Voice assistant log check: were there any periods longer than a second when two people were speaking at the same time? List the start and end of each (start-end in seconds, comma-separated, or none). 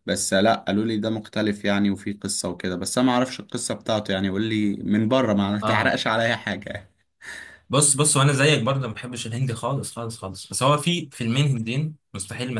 none